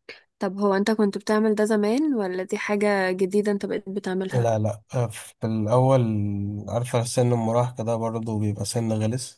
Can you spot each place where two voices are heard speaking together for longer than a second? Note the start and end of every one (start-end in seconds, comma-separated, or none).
none